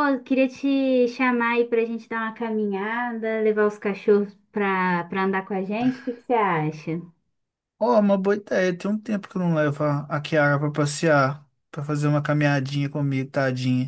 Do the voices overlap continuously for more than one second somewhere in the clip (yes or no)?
no